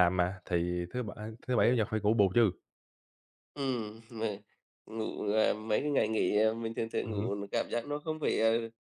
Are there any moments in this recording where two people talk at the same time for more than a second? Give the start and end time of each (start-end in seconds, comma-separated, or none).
none